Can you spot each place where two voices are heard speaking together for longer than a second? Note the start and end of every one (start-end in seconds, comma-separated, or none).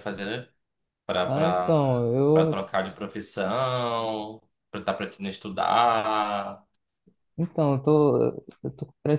1.2-2.6